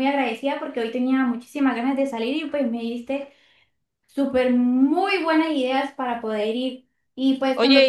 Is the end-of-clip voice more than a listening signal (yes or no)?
no